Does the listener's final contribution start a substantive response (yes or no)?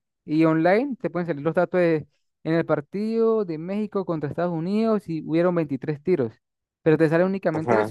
no